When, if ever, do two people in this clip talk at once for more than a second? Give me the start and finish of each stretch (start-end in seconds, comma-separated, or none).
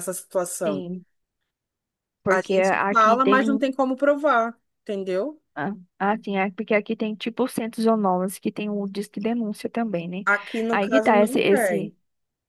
2.3-3.6, 10.7-11.9